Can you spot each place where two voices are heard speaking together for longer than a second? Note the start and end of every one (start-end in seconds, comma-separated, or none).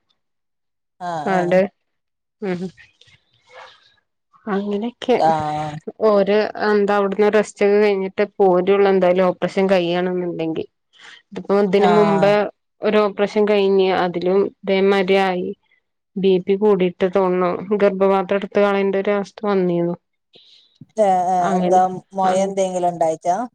none